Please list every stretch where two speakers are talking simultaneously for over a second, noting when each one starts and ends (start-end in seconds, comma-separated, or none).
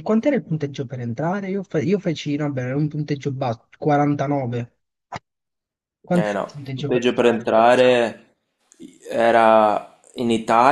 6.1-7.5